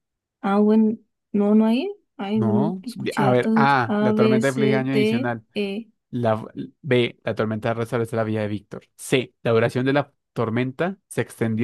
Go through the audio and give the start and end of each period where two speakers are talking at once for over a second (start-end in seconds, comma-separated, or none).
2.3-5.4